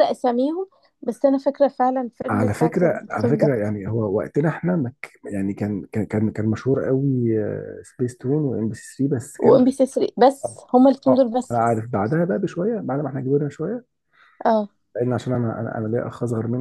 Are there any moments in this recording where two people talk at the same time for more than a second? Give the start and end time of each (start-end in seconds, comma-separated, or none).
2.3-3.5